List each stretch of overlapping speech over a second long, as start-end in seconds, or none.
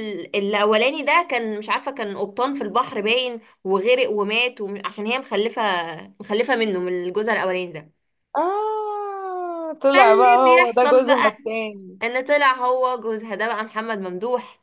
9.9-11.3